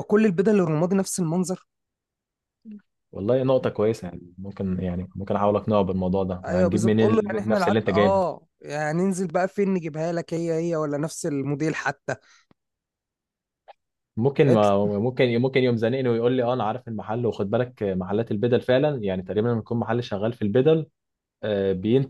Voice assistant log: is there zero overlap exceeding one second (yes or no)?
no